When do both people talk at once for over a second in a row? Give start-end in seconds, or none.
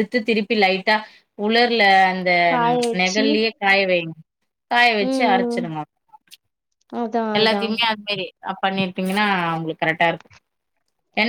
none